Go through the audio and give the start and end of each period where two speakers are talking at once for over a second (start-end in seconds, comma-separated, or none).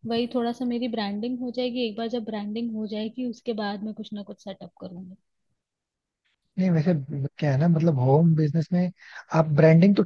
none